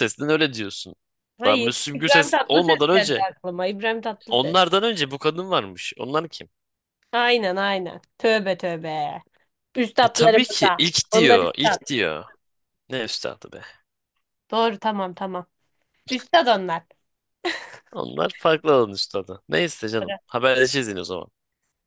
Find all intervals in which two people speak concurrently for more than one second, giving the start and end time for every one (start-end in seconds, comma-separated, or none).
1.4-3.3, 10.0-11.8